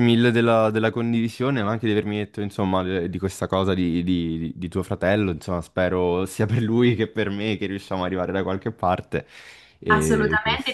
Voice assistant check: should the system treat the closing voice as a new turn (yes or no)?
yes